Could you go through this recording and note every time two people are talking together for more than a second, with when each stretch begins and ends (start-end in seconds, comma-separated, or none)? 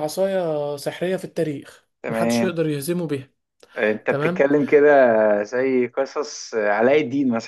none